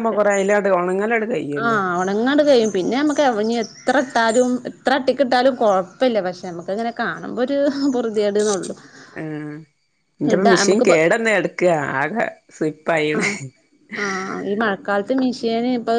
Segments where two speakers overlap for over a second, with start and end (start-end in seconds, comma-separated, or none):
none